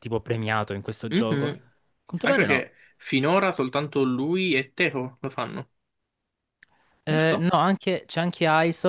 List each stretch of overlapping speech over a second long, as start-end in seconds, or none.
none